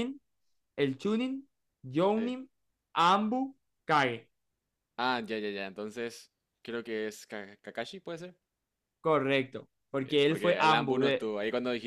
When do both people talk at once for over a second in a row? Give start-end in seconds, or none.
10.0-11.3